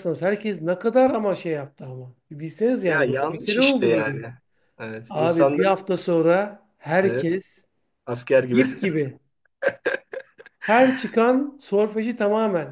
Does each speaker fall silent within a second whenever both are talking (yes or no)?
no